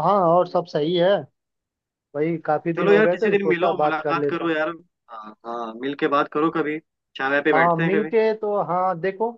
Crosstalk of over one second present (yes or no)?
yes